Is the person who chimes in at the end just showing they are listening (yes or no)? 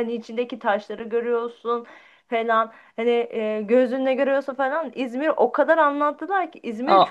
no